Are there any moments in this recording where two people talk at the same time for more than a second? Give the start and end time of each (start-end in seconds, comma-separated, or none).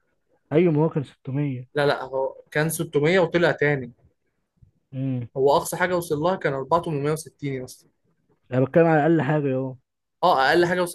none